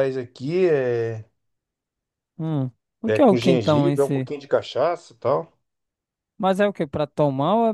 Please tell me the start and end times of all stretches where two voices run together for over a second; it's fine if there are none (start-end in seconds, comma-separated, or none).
3.0-4.3